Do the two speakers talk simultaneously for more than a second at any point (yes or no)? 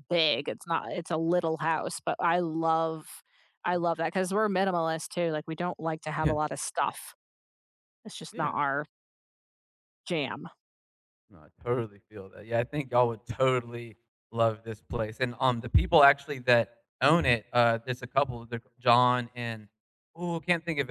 no